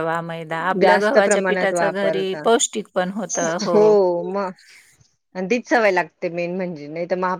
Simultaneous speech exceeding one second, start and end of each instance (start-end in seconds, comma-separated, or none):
0.8-2.4